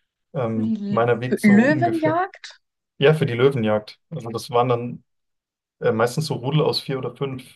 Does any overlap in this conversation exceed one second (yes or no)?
yes